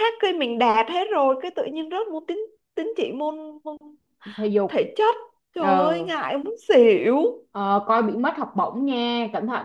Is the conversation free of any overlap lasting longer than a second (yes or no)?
yes